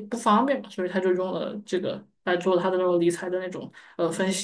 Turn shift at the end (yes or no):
yes